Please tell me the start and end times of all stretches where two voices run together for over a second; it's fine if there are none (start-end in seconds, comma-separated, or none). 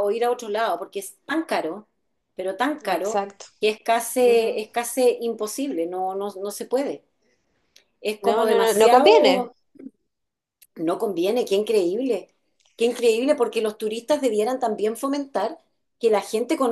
8.3-9.5